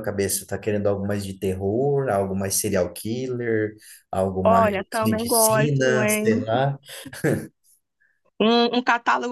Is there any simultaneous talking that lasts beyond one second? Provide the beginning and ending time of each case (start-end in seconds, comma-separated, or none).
4.4-6.3